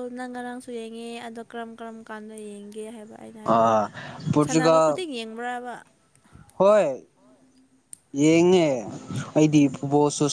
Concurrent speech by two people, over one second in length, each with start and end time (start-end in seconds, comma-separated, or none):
none